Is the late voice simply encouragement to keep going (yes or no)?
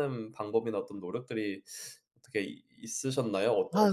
no